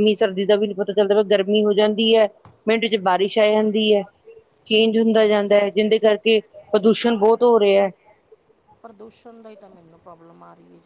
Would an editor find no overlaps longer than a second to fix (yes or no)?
yes